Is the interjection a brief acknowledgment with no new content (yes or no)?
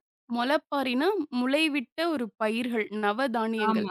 no